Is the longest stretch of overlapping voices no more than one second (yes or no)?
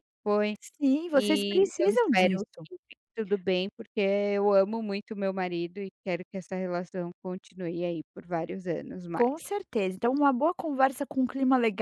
no